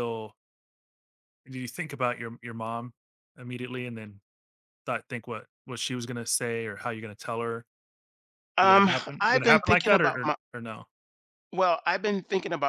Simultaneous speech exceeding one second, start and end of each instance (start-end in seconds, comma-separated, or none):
8.6-10.3